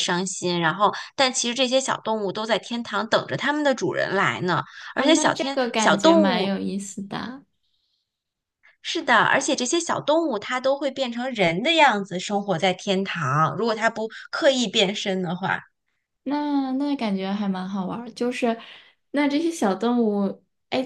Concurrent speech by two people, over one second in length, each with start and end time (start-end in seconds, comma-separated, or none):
5.0-6.5